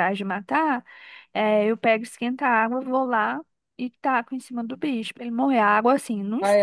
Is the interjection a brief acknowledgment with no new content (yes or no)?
yes